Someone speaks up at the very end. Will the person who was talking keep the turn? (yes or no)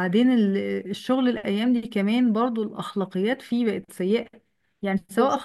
yes